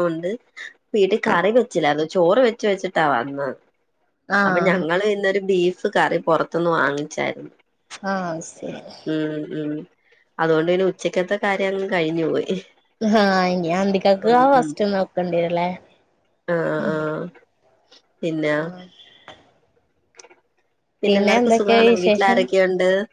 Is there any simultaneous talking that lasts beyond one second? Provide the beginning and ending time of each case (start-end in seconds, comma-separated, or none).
21.1-22.4